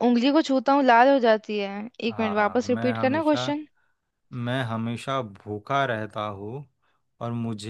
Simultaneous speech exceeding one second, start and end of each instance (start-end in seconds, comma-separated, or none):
2.1-3.4